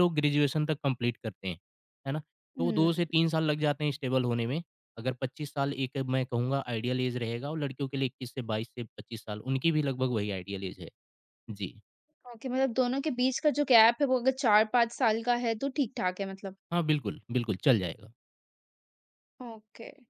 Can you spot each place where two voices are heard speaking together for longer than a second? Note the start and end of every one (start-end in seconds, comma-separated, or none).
none